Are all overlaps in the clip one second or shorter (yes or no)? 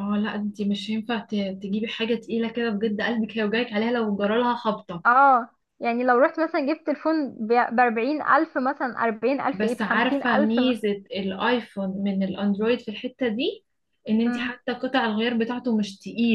no